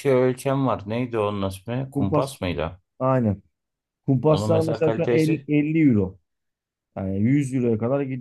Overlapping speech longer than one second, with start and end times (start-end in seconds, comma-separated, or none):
4.3-5.5